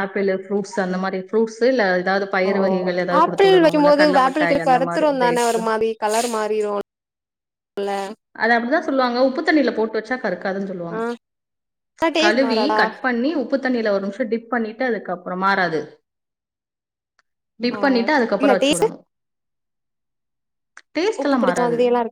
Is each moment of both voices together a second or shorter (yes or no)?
no